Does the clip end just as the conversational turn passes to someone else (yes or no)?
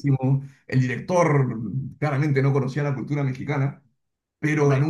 no